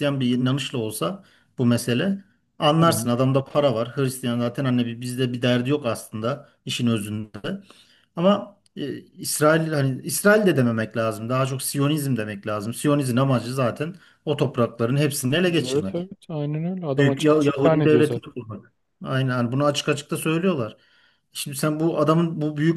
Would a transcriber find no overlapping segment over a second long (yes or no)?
no